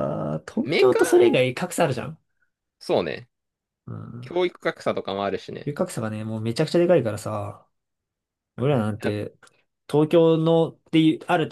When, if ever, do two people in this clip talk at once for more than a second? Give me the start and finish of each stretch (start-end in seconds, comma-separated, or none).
none